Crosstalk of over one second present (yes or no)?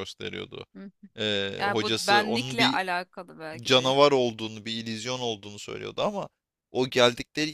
yes